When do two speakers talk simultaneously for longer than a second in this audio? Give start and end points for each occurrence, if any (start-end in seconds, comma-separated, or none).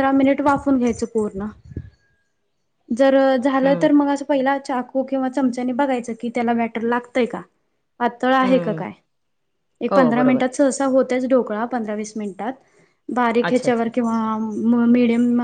none